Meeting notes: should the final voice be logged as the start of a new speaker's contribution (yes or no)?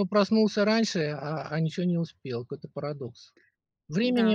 yes